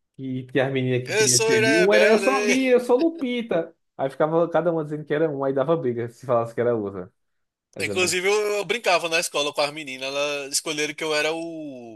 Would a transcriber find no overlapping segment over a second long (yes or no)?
no